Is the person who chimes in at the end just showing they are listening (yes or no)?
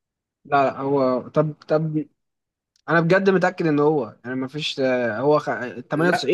yes